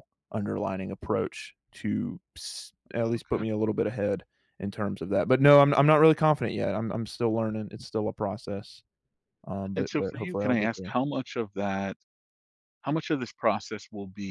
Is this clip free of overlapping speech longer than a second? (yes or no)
no